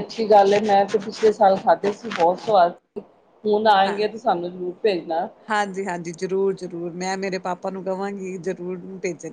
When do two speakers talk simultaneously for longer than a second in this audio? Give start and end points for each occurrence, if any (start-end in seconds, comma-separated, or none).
none